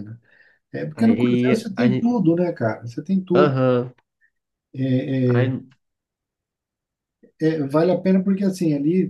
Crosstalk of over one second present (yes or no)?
yes